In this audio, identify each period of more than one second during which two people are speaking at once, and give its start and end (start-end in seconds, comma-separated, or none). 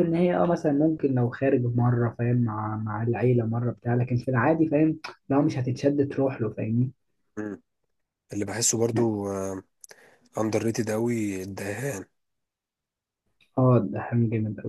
none